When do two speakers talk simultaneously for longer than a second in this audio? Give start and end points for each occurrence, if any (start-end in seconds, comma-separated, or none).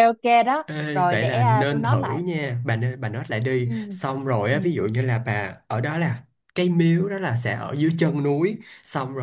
0.7-2.2